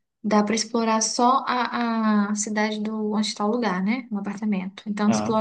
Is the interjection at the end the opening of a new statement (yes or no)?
no